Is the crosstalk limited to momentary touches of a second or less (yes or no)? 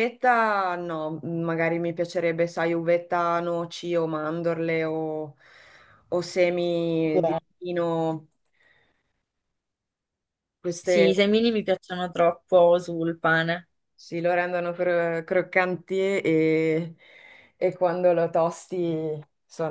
yes